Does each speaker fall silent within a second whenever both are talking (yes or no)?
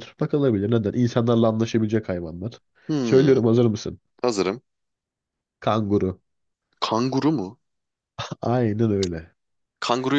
yes